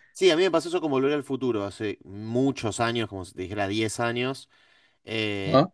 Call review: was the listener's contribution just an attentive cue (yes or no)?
yes